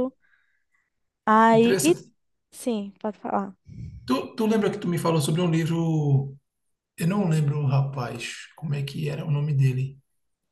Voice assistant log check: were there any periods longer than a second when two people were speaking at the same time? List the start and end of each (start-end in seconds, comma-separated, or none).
none